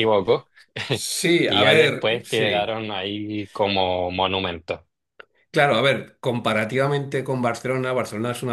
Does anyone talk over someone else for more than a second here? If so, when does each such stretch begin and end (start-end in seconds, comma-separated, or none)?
1.4-2.8